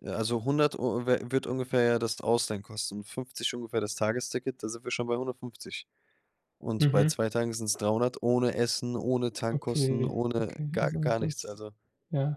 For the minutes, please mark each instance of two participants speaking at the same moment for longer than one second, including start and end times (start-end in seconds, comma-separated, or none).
9.5-11.6